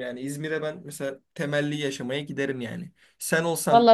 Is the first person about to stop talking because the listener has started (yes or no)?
no